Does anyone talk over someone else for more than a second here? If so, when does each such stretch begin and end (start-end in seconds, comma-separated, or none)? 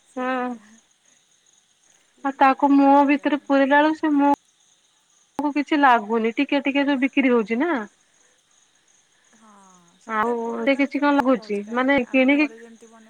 10.1-12.4